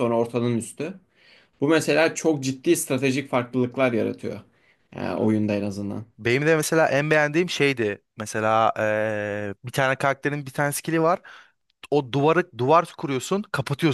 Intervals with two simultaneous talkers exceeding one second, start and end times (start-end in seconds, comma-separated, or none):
none